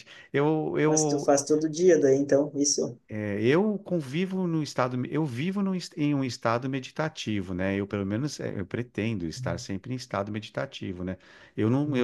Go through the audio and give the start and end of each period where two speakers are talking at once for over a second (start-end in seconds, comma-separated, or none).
none